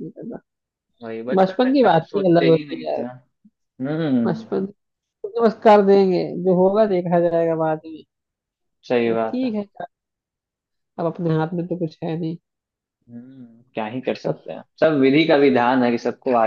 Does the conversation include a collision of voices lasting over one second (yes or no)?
yes